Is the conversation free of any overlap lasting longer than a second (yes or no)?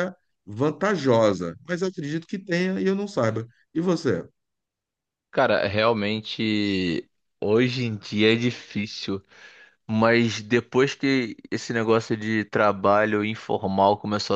yes